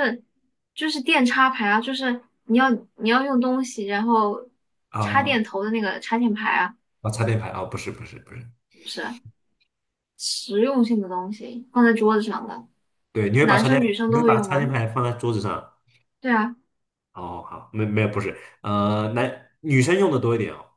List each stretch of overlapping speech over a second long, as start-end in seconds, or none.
13.4-14.7